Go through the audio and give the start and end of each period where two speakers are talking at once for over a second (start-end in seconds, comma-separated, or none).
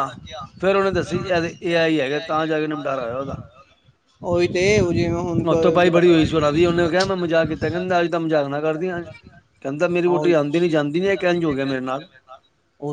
none